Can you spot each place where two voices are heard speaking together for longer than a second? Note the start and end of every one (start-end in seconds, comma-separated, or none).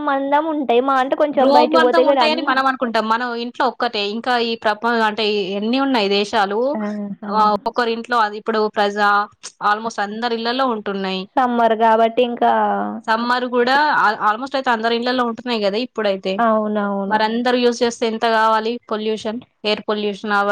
1.4-3.0